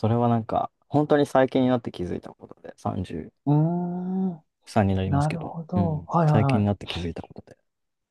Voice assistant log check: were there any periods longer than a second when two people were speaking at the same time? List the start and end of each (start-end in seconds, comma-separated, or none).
5.1-6.9